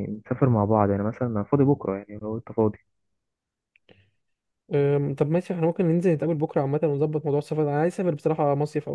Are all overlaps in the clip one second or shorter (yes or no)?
yes